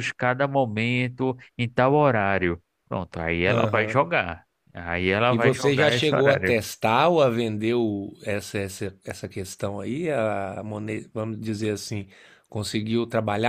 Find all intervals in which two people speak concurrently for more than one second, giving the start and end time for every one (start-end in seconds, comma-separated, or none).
5.3-6.5